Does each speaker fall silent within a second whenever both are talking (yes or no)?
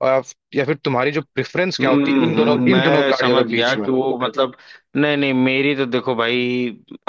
no